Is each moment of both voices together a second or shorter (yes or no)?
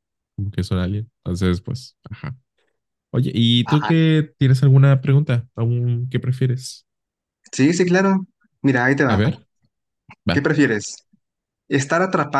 yes